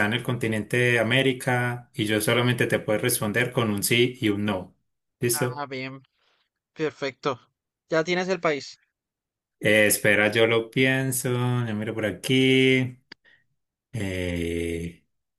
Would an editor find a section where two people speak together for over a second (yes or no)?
no